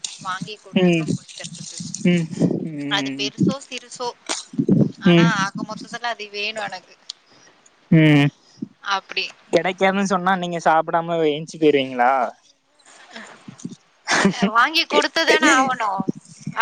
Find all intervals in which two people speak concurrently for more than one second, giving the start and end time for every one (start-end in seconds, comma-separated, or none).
none